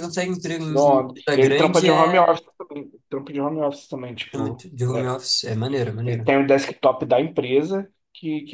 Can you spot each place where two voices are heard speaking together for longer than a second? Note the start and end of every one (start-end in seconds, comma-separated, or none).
0.7-2.4